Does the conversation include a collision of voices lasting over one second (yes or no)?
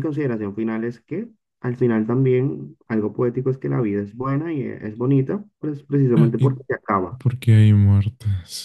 no